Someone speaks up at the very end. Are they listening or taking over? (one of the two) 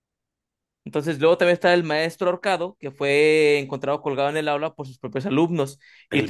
listening